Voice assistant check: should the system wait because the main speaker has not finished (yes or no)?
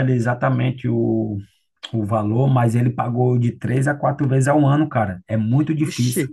no